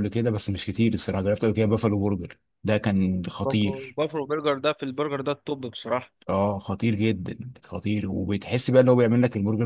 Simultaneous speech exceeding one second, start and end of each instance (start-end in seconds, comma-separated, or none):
none